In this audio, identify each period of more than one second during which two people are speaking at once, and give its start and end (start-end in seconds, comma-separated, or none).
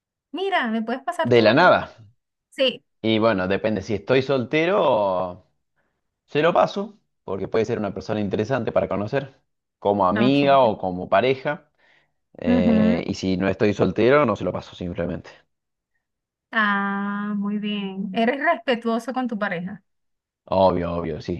none